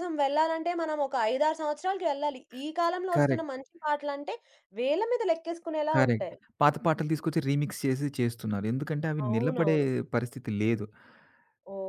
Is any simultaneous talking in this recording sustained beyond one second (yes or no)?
no